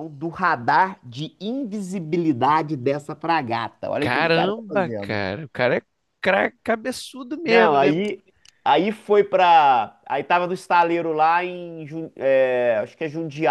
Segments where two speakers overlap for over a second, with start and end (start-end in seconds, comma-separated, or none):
4.0-5.2